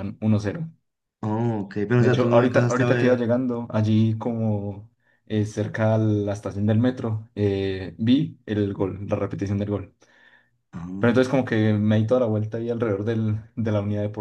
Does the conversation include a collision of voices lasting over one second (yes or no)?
yes